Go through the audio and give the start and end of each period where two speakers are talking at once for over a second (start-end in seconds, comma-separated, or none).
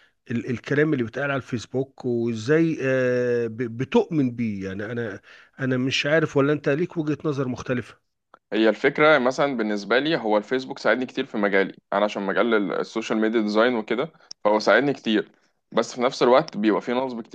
none